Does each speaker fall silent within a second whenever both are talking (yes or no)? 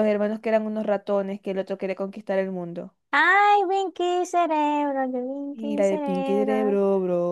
no